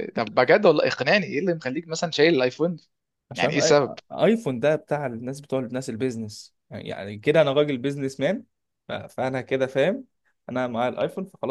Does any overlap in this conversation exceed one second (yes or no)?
no